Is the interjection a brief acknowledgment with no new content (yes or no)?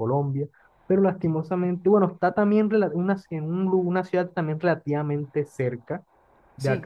yes